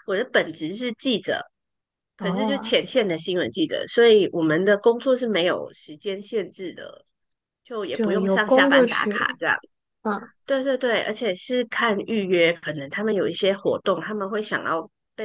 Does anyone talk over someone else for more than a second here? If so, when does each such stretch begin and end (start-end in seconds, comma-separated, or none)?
7.9-9.4